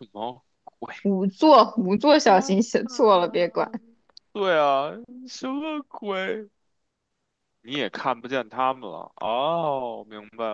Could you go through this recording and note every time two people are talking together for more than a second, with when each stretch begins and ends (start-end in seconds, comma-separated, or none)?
2.2-3.6